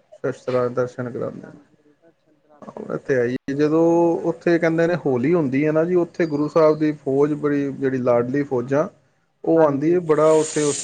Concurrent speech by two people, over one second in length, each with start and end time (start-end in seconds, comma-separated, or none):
1.4-2.9